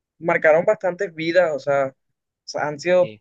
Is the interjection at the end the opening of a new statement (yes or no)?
no